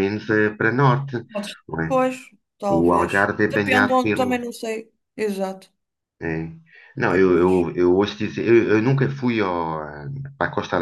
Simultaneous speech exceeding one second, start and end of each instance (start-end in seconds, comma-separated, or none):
2.7-4.4